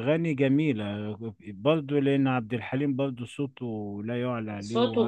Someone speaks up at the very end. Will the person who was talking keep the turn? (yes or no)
no